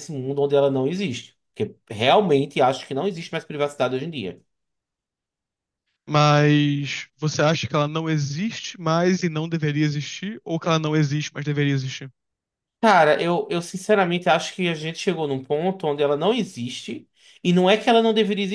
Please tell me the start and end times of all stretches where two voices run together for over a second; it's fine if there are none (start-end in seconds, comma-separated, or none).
none